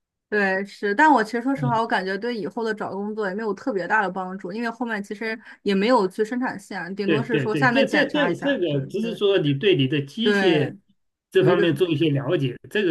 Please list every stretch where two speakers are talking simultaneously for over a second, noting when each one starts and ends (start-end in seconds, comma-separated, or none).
7.0-9.2